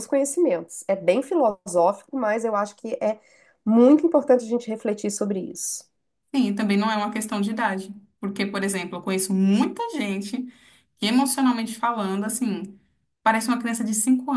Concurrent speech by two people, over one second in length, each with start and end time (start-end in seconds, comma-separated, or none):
none